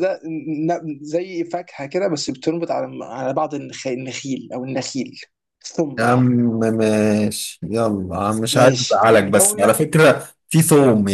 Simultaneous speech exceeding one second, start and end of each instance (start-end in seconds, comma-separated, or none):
8.5-9.8